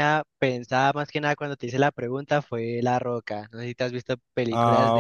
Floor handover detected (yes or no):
yes